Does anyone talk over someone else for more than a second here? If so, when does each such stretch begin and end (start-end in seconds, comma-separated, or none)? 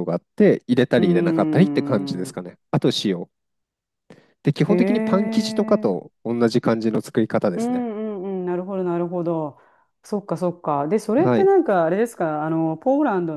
1.0-2.4